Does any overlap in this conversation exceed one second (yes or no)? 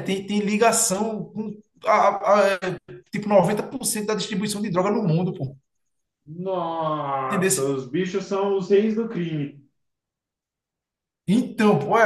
no